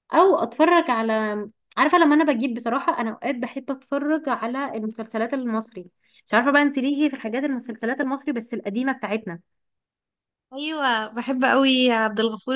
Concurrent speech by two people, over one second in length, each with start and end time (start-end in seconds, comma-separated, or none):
none